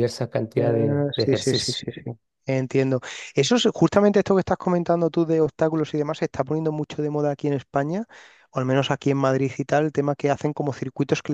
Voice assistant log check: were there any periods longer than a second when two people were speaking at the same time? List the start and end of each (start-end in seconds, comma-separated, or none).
0.6-1.9